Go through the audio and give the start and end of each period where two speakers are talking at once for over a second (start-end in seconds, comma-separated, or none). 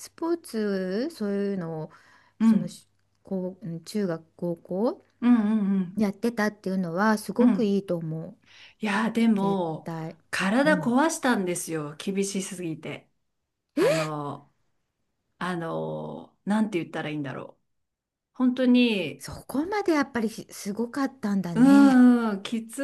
none